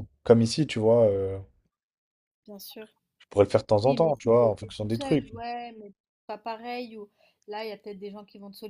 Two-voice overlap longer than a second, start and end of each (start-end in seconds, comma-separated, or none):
3.8-5.3